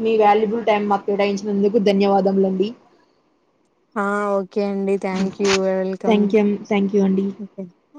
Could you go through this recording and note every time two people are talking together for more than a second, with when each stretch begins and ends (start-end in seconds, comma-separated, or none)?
none